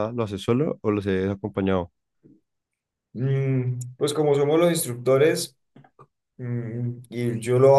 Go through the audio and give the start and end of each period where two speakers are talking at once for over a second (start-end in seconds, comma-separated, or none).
none